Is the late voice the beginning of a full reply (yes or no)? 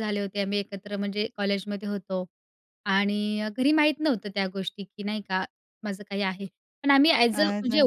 no